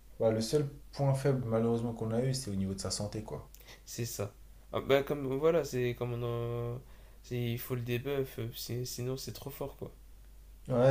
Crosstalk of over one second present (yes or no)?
no